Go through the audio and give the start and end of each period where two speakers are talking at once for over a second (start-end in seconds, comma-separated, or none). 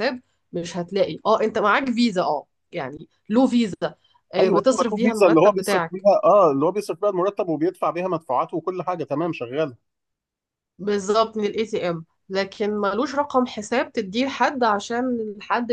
4.4-6.0